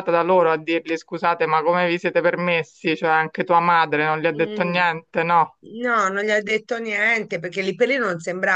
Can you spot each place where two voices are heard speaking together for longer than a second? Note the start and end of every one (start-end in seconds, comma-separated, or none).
none